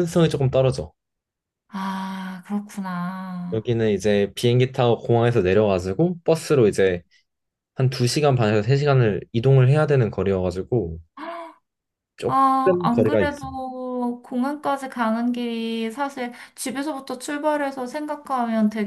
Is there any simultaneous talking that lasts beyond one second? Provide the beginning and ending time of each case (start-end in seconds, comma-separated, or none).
12.3-13.5